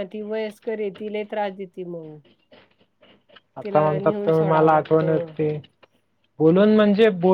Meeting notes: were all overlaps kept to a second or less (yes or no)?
no